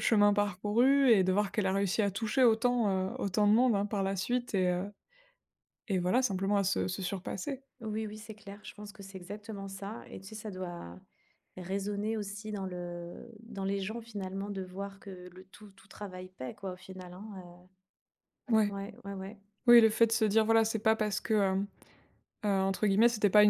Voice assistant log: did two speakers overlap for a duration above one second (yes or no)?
no